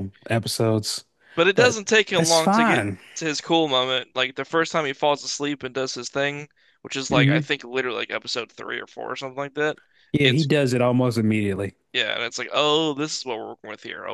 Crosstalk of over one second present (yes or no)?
yes